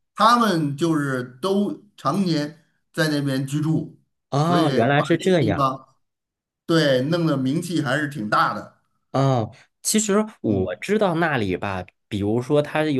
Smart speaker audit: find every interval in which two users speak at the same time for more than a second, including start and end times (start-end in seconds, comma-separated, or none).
4.4-5.7